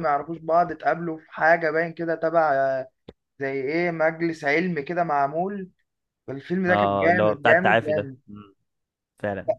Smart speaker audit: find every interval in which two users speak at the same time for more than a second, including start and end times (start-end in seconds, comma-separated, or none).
6.7-8.2